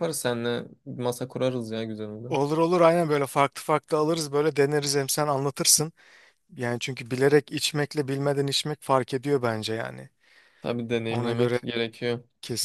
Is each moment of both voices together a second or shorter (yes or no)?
yes